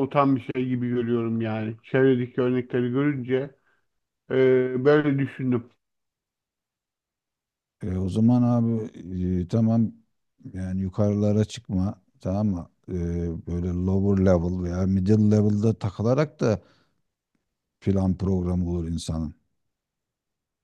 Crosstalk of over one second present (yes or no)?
no